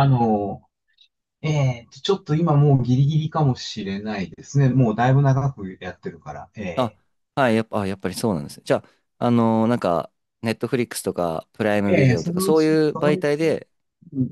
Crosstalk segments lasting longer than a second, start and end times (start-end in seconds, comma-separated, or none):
11.9-13.3